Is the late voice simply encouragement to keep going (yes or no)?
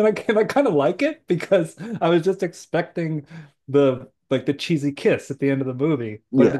yes